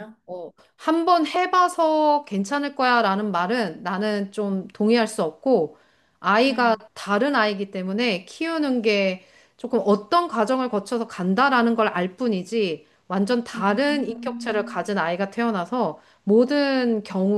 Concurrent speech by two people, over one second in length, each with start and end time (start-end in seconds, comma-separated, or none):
13.6-14.9